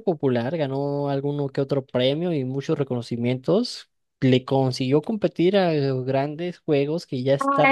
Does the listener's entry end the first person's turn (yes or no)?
yes